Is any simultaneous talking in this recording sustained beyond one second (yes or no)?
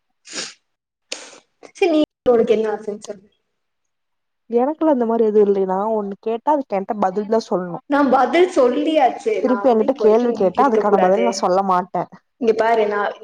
yes